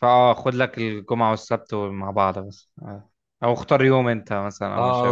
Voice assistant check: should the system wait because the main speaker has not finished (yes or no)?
no